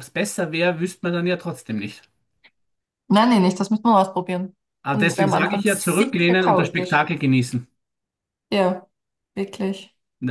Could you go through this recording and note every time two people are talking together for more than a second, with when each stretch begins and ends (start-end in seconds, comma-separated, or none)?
4.8-7.0